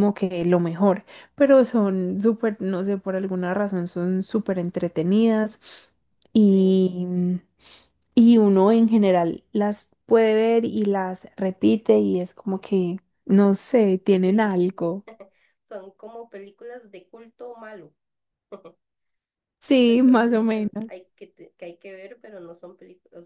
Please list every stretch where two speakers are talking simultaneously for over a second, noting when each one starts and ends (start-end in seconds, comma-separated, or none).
19.7-20.9